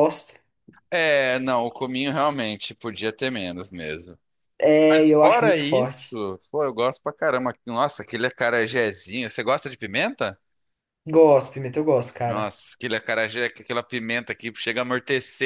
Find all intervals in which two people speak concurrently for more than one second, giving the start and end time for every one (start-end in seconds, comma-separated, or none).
4.9-6.1